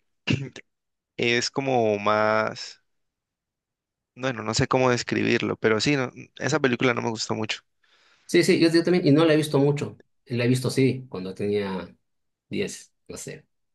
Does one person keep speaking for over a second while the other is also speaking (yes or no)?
no